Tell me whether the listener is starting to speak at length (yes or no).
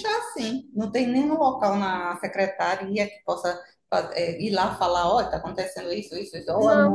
yes